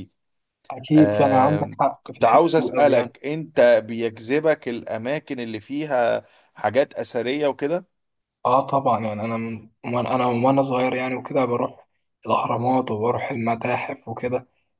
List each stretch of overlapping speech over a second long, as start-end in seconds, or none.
0.9-3.1